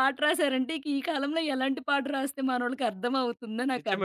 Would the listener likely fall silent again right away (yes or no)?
no